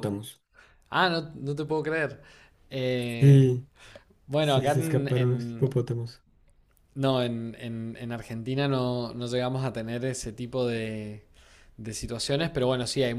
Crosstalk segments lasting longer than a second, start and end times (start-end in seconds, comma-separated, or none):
4.4-5.7